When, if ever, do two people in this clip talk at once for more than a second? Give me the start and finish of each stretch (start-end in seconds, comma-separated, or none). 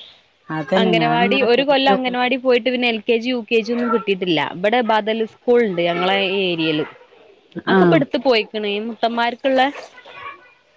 0.8-2.3